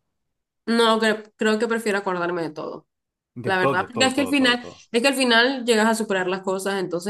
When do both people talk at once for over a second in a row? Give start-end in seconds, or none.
3.4-4.8